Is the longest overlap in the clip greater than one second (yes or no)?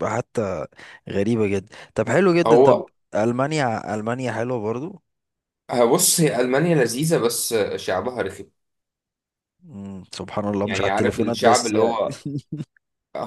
yes